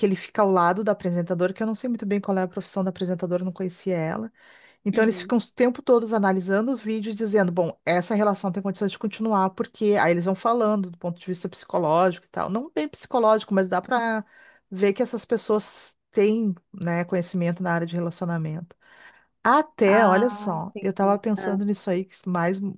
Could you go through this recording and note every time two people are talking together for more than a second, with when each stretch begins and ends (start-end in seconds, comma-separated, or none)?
19.9-21.6